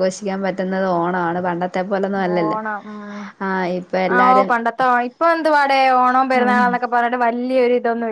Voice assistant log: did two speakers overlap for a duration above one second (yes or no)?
no